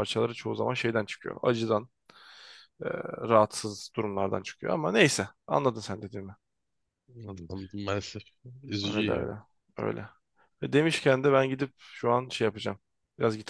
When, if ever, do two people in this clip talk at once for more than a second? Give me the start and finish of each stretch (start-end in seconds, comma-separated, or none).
none